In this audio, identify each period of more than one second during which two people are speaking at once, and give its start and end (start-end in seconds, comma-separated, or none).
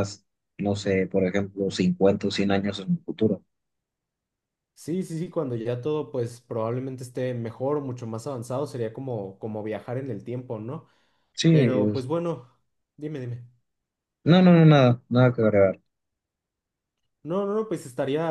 none